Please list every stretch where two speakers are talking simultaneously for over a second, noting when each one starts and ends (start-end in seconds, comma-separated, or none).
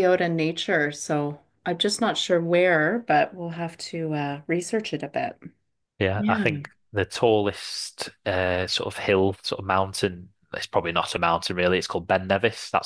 none